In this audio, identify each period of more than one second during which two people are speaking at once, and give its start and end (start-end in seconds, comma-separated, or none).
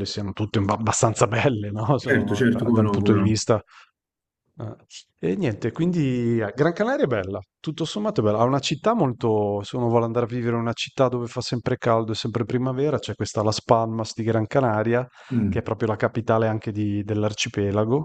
2.0-3.4